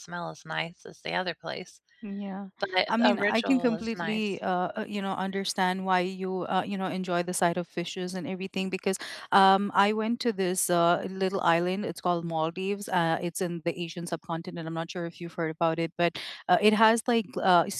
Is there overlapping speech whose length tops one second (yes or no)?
yes